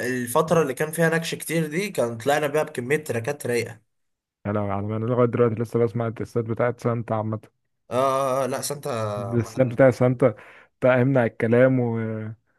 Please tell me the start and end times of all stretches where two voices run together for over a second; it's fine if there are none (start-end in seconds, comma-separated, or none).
none